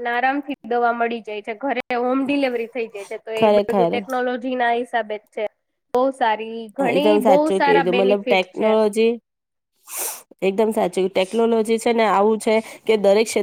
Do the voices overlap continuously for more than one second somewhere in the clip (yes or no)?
yes